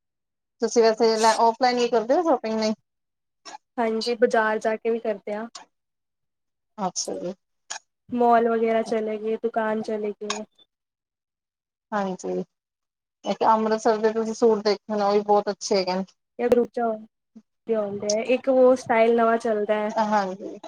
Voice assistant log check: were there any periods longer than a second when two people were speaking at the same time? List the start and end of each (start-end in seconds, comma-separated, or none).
none